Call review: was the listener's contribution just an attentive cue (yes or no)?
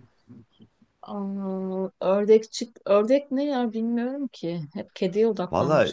no